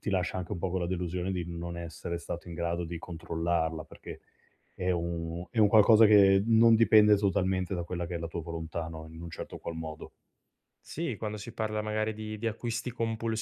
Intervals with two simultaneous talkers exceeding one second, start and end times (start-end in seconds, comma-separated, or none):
none